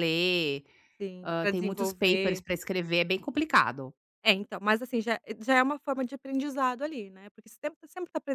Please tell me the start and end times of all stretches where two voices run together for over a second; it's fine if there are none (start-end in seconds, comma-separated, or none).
1.2-2.4